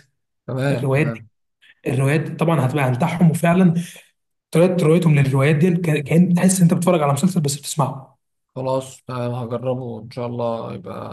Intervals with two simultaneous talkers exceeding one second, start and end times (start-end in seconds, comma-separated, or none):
none